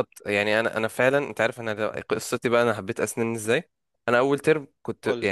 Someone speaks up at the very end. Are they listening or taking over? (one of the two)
listening